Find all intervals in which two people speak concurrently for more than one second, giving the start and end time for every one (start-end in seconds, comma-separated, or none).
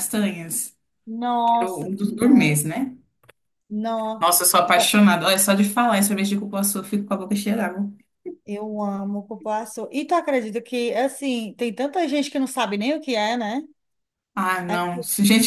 1.4-2.7